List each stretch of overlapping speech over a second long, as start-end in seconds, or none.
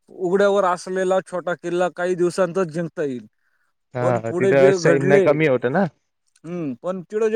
4.0-5.8